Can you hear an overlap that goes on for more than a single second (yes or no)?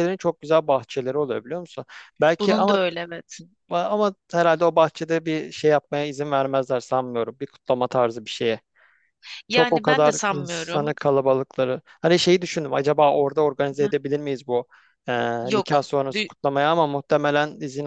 yes